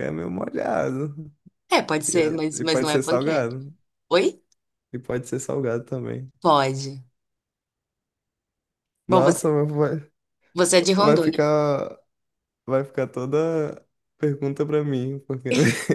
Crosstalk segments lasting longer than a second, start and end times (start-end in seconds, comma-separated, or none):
2.1-3.5